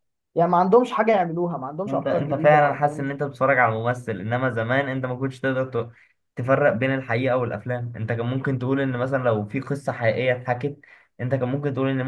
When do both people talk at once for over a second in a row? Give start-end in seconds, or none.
1.9-3.1